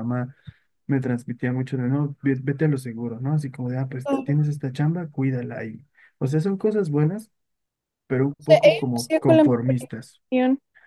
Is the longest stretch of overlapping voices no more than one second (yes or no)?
no